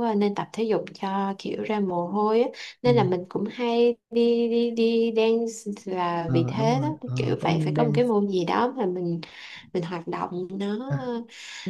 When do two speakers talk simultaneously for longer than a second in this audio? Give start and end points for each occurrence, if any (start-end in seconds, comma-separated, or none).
6.2-8.1